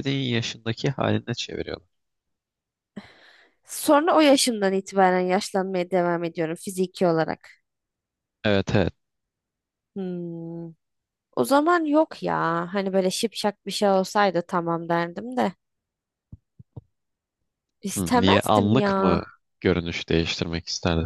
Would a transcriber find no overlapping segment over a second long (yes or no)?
no